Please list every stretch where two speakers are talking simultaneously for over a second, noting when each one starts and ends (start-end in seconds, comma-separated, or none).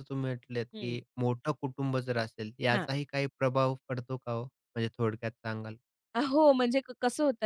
none